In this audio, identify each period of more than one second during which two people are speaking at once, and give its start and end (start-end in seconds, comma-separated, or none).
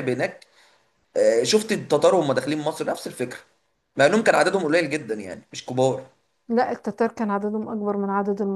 none